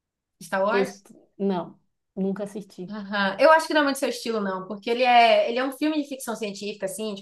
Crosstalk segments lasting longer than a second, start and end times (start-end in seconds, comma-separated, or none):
none